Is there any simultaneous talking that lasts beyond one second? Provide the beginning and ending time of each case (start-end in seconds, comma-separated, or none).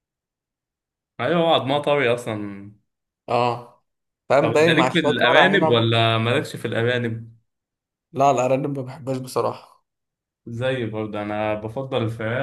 4.4-5.8